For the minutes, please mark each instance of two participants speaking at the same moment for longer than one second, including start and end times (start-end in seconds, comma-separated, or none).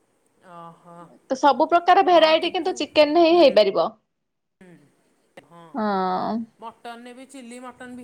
none